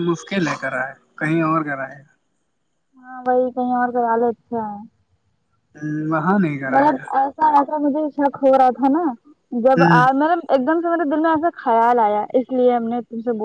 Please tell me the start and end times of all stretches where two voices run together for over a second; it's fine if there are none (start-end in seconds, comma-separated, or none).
none